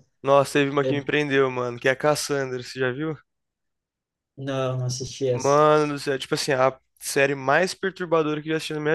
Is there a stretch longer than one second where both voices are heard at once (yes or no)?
no